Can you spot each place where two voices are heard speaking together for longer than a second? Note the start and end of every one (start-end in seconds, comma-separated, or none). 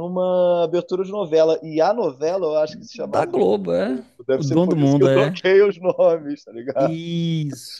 2.9-5.4